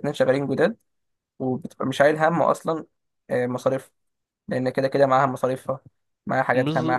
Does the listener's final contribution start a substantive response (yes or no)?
yes